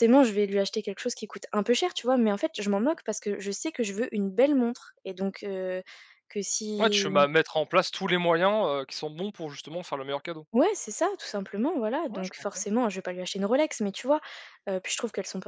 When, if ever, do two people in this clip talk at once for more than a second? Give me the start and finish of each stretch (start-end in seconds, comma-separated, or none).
none